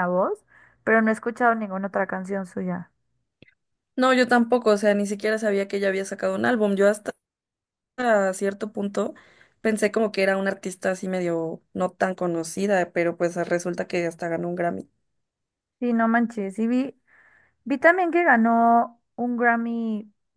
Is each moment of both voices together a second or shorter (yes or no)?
yes